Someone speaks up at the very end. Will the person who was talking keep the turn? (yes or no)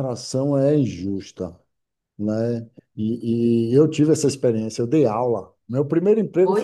yes